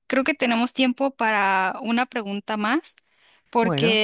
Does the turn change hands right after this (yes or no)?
no